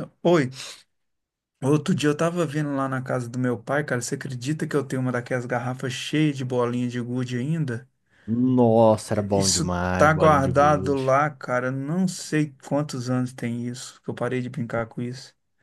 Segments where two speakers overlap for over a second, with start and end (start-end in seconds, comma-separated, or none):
9.3-11.1